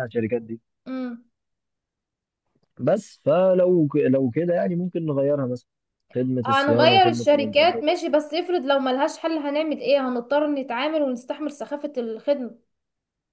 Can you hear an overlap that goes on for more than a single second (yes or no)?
yes